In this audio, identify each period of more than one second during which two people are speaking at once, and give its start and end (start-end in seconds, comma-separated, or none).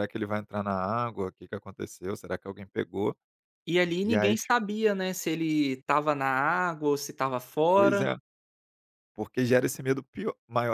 none